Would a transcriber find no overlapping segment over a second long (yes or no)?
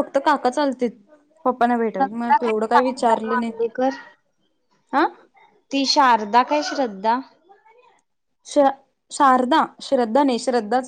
no